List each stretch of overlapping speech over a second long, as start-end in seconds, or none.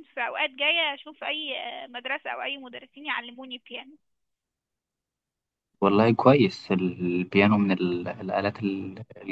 none